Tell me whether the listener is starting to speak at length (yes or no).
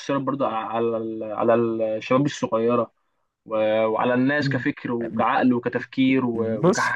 yes